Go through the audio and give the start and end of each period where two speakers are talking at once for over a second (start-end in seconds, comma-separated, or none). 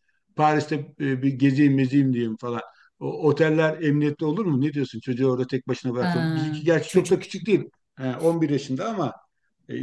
6.0-7.6